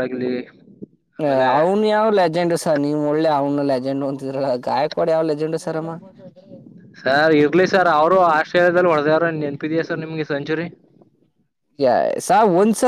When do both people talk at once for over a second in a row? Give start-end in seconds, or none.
none